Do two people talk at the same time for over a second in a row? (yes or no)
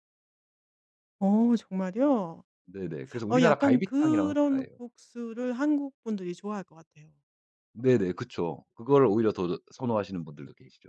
yes